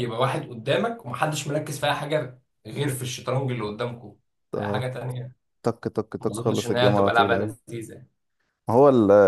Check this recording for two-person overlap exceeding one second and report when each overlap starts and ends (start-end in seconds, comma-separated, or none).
6.2-7.5